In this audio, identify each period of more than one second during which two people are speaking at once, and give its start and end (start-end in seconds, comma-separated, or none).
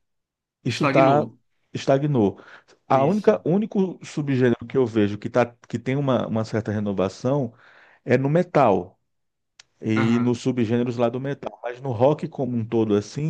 none